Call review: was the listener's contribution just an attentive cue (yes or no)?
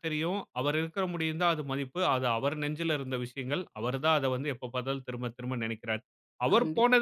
yes